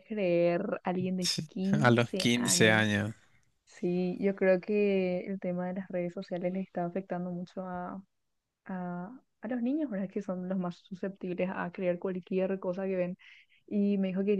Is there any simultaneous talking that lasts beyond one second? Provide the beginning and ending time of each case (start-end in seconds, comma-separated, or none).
1.2-2.9